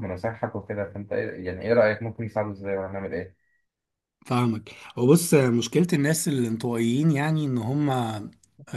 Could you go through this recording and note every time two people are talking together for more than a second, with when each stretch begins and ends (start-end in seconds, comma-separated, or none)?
none